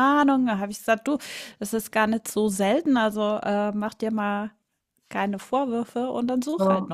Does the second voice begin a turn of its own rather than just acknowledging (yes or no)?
yes